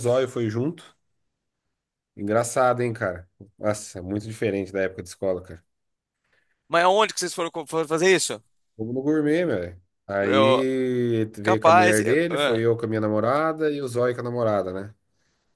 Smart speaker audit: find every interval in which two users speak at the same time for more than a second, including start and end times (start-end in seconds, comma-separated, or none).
11.4-12.7